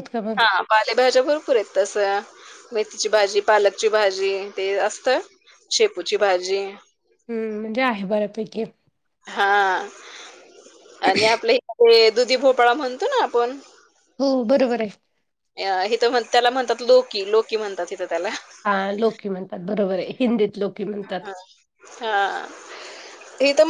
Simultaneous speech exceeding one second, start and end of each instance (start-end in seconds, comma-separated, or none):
none